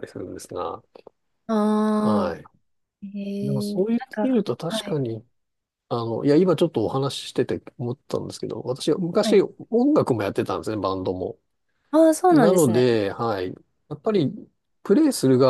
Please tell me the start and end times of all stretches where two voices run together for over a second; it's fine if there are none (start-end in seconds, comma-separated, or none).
3.5-5.0